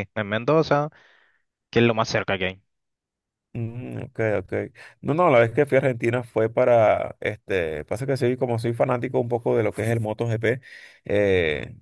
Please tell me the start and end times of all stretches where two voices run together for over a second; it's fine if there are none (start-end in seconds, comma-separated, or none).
none